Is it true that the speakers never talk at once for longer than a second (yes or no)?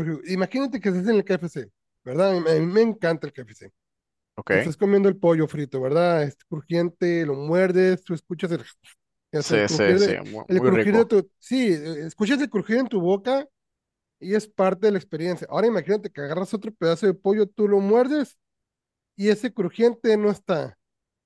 no